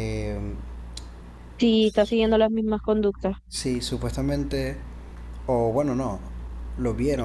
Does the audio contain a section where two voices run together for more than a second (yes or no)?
no